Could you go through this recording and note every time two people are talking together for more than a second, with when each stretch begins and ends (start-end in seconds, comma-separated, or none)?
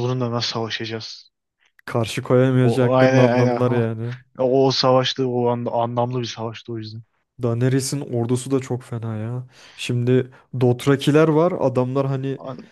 2.6-3.9